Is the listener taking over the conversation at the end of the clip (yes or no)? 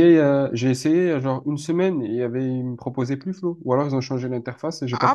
yes